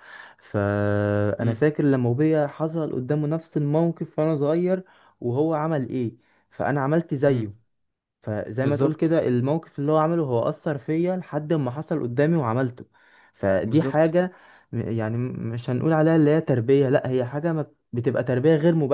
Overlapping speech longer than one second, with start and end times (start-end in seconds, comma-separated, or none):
none